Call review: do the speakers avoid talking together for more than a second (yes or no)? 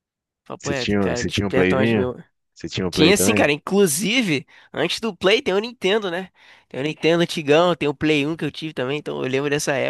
no